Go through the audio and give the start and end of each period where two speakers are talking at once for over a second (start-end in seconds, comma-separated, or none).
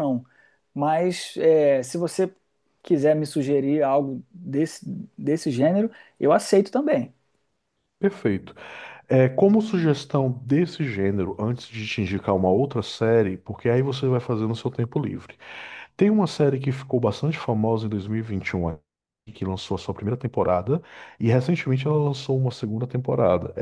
none